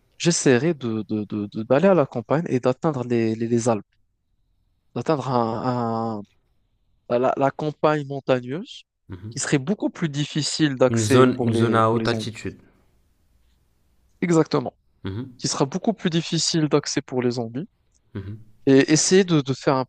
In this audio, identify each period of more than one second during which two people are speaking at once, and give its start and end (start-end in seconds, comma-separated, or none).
10.9-12.3